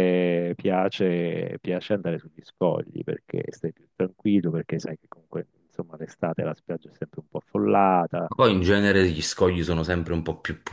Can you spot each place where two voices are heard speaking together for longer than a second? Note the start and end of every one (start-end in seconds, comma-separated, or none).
none